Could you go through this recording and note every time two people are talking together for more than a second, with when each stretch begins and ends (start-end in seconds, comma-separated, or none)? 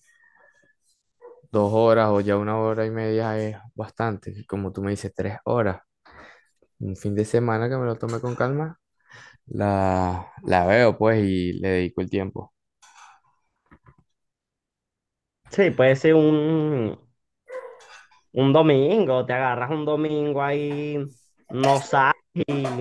none